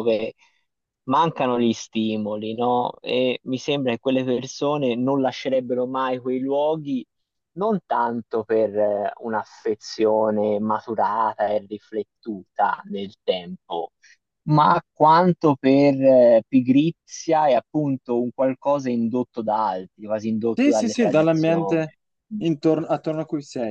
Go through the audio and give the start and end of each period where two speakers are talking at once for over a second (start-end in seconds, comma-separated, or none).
20.5-21.9